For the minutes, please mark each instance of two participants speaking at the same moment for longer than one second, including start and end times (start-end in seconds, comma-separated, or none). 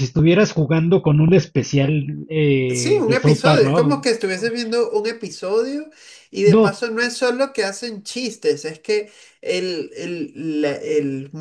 2.7-4.1